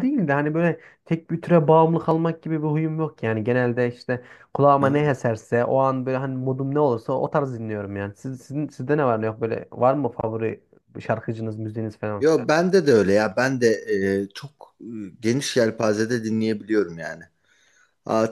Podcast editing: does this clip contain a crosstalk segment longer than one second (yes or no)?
no